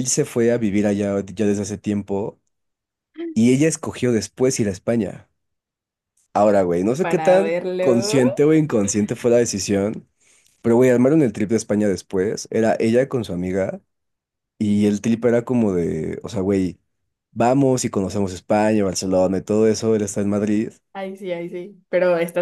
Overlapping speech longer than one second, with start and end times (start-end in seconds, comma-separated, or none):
7.0-8.2